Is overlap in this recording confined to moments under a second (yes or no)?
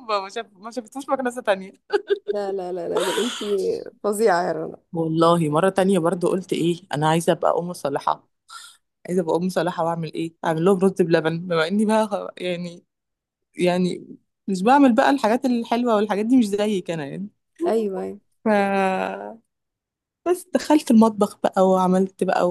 yes